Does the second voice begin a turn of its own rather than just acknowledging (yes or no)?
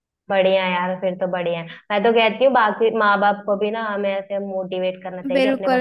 yes